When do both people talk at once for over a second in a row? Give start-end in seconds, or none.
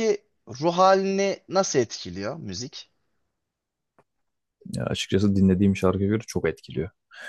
none